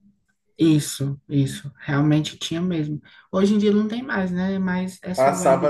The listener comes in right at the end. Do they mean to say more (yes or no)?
yes